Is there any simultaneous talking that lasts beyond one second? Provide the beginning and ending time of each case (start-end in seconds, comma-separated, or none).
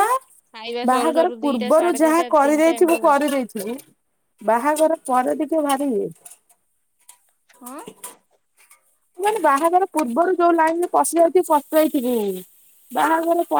0.9-3.2